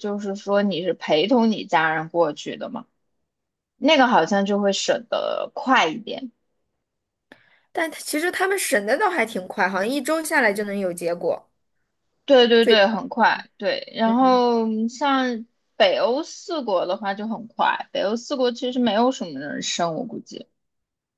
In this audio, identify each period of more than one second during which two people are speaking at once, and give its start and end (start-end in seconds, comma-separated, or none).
none